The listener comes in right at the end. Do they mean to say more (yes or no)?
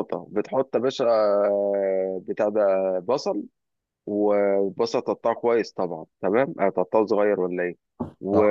no